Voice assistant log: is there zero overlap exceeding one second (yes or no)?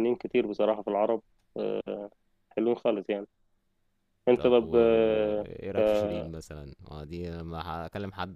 yes